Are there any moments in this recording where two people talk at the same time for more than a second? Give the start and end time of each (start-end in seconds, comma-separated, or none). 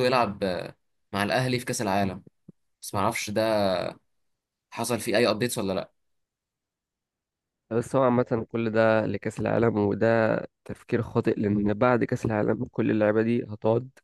none